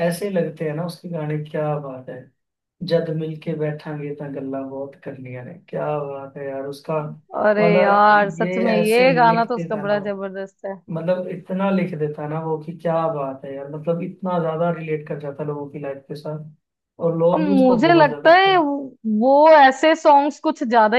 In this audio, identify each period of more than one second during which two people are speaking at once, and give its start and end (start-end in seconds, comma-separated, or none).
7.6-9.9, 17.3-18.6